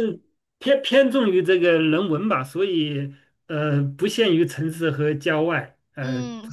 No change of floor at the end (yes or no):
no